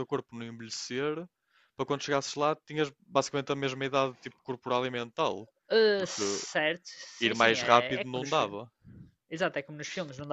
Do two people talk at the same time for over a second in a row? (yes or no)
yes